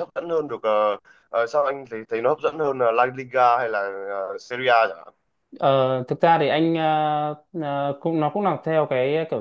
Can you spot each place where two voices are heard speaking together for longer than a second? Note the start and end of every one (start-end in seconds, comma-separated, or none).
none